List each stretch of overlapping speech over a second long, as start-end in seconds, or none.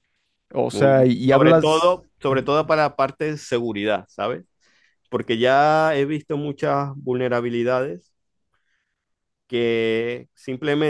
0.7-2.5